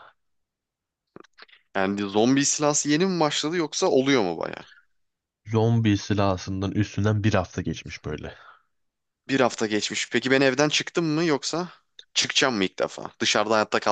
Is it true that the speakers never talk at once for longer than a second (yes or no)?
yes